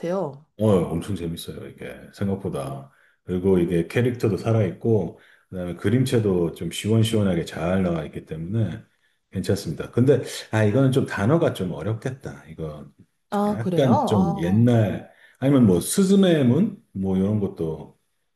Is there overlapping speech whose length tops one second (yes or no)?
yes